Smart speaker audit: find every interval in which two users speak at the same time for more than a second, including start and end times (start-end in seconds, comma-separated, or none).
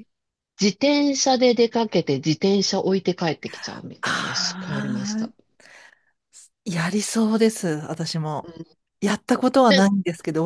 4.0-5.3